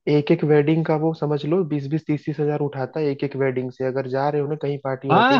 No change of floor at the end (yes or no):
no